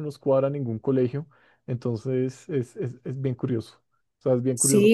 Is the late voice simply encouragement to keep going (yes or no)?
no